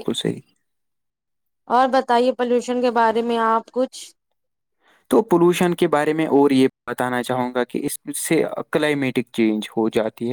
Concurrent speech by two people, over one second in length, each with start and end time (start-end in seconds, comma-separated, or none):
none